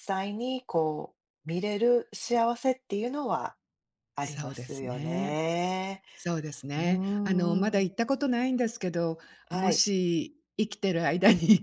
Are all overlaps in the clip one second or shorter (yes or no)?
no